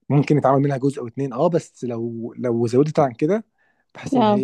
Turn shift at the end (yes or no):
no